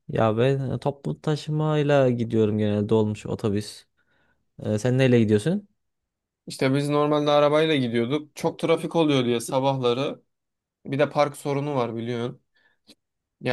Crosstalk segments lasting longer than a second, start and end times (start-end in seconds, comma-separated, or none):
none